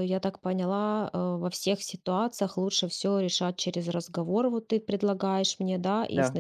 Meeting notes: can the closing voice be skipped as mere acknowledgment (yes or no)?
yes